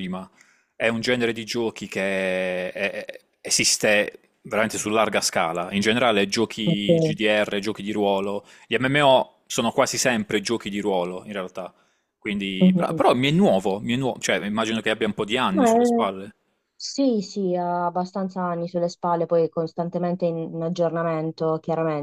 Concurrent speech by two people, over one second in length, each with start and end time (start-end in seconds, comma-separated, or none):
none